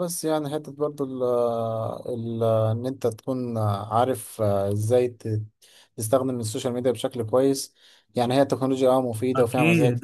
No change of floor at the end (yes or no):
no